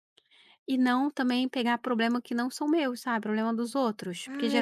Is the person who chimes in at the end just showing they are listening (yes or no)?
no